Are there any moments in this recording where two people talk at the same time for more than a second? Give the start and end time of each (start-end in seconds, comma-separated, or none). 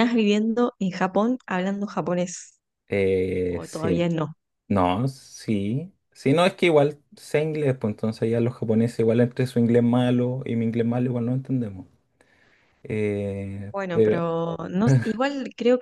none